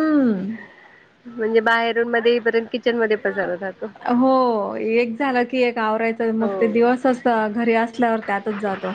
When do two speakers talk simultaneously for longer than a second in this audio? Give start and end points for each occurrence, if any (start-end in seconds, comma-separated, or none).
none